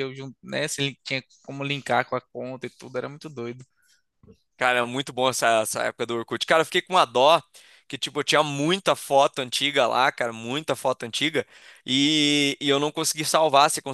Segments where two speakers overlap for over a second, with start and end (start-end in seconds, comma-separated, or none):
none